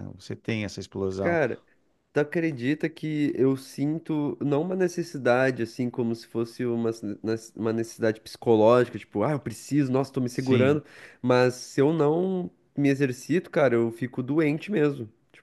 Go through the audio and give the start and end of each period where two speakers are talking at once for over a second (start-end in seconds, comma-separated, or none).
none